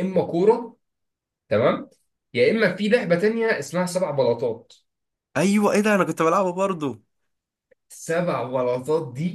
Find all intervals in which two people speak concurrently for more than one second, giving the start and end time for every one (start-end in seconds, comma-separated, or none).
none